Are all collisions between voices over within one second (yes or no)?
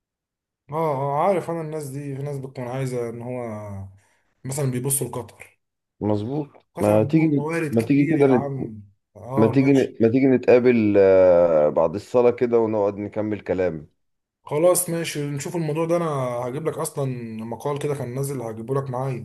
no